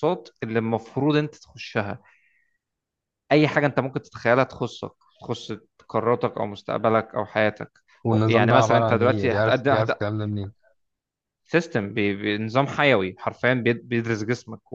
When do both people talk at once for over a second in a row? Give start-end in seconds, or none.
8.1-9.9